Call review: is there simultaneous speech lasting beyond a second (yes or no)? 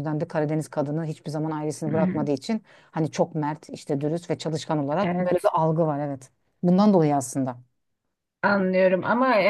no